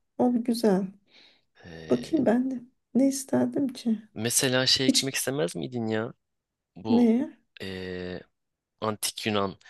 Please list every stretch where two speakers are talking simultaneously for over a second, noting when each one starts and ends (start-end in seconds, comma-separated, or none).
none